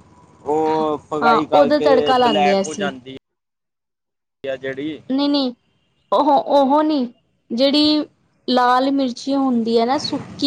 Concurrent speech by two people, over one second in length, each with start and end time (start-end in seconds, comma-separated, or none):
1.2-2.9